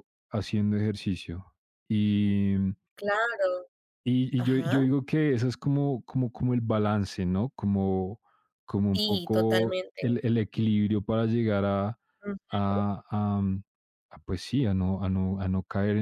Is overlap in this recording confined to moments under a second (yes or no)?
no